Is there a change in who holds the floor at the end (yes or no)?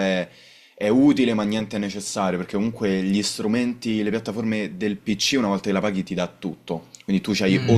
no